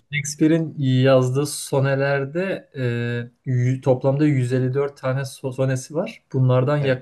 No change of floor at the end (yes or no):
yes